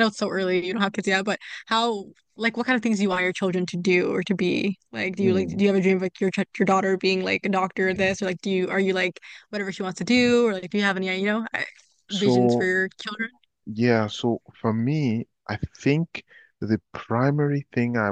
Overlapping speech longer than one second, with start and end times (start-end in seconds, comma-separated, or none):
none